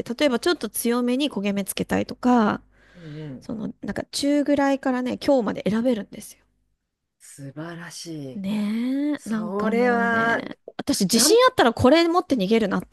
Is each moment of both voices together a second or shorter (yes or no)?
no